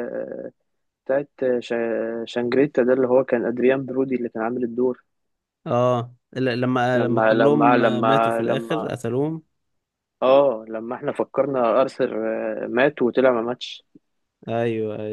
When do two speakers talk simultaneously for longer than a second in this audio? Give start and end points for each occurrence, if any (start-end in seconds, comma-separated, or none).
6.9-8.9